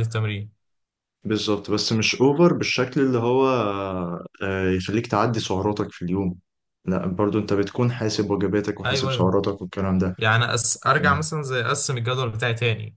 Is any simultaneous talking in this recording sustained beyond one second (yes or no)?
no